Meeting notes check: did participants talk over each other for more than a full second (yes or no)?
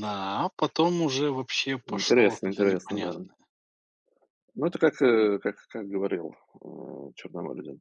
yes